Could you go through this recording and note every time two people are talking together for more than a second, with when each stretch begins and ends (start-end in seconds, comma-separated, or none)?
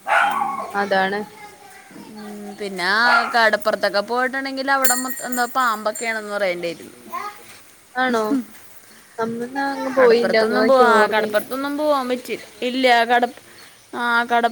10.0-11.4